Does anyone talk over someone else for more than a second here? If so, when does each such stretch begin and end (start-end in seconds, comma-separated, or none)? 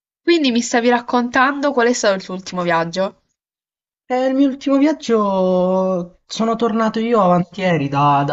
none